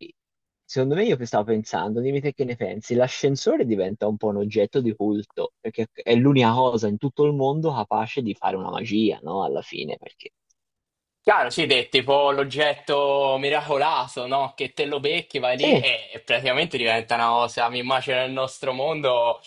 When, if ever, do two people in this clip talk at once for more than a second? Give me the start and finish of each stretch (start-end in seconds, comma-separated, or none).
none